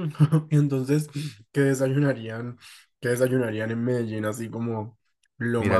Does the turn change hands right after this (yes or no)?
yes